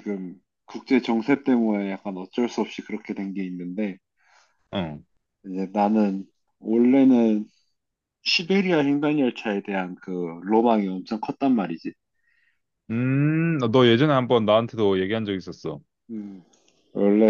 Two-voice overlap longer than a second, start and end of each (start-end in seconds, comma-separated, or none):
none